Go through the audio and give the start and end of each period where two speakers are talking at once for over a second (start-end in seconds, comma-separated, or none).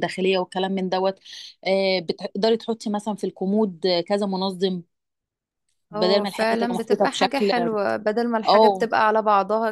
5.9-7.5